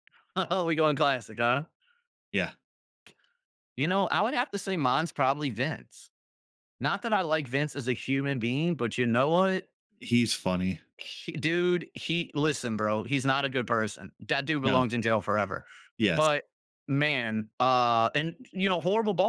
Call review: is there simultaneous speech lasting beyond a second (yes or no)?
no